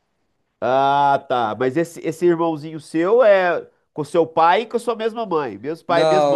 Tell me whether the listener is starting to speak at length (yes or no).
yes